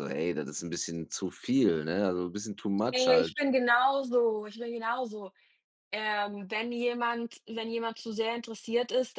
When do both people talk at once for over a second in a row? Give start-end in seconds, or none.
none